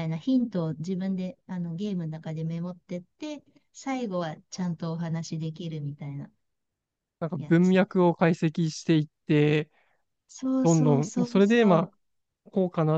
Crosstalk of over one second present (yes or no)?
yes